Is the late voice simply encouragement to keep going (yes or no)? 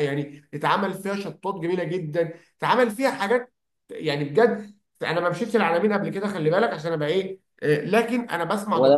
yes